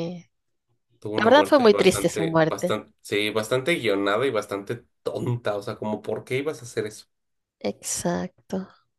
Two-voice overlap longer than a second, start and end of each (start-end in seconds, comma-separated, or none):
1.2-2.8